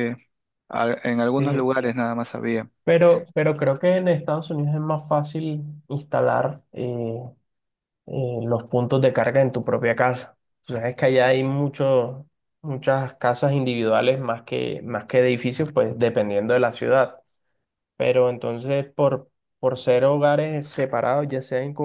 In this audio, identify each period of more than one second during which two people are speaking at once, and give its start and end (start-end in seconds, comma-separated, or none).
none